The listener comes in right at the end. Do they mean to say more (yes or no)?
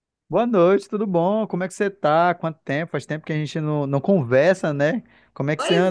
yes